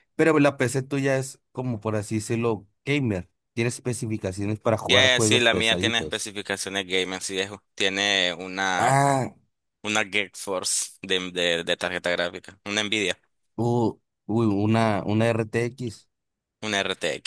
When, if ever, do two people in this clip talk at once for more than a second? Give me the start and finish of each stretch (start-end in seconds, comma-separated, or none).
4.9-6.3